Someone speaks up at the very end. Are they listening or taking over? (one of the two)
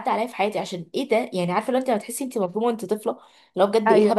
listening